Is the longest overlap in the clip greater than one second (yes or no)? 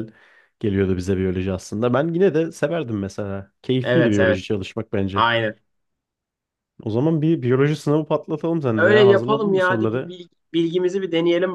yes